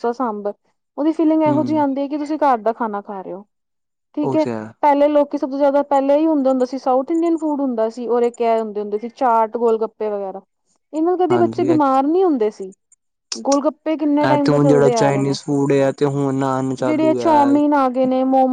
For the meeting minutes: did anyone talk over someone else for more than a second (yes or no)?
yes